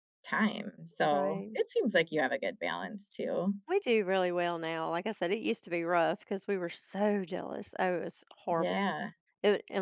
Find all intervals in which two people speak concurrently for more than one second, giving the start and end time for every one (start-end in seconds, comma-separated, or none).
none